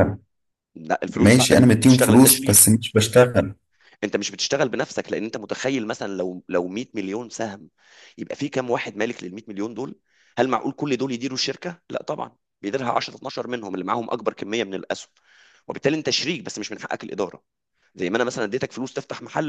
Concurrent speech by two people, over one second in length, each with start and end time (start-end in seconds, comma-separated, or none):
1.1-2.6